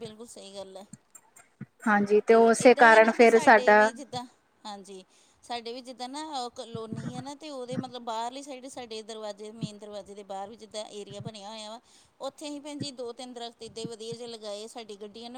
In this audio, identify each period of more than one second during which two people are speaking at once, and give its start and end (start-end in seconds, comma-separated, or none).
2.3-3.9